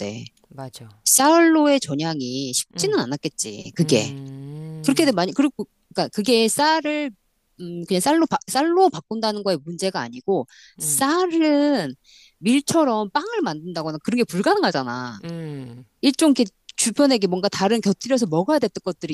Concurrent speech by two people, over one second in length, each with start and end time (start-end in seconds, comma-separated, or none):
none